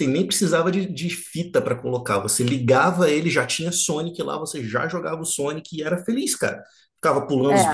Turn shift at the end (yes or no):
no